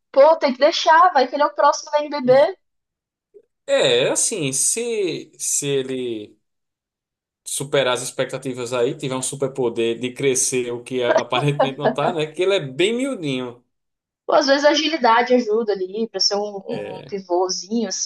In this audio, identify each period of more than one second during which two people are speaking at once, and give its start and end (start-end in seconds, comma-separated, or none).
none